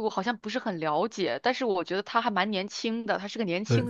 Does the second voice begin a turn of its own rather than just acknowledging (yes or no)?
yes